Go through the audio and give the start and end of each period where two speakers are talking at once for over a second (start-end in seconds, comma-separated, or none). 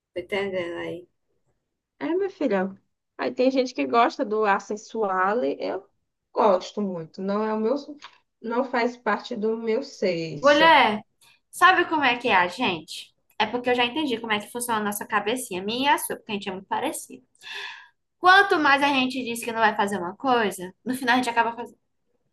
none